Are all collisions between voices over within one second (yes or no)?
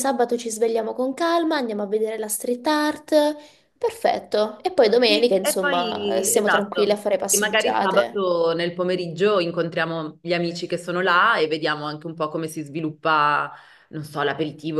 no